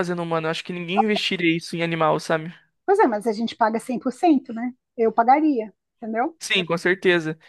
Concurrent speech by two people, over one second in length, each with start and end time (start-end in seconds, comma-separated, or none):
none